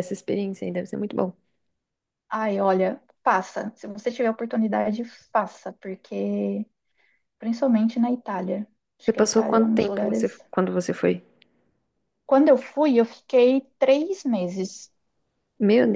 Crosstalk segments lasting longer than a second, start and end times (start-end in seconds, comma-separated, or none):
9.0-10.4